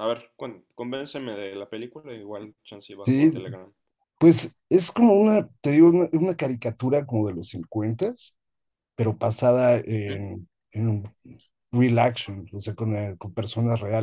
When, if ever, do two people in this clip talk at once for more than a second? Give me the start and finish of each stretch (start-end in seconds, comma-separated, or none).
none